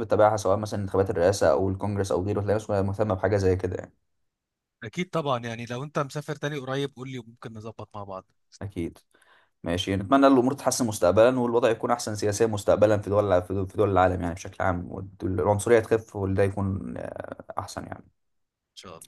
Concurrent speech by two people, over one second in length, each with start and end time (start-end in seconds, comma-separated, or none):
none